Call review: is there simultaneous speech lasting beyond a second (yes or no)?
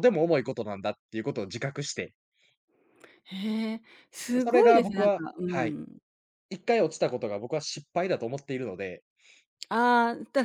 yes